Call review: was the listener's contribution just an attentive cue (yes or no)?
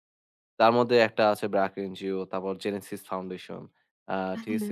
yes